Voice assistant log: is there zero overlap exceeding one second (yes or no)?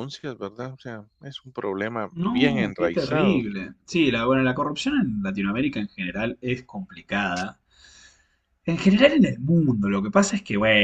no